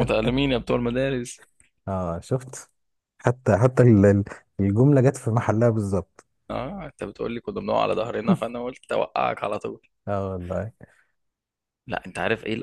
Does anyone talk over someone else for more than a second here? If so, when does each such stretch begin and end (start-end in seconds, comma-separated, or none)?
none